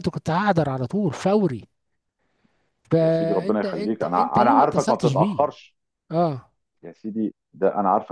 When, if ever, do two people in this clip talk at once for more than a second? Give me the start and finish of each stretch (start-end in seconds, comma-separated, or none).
3.0-5.4